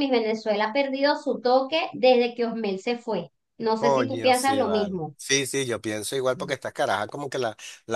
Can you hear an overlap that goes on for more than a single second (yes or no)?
yes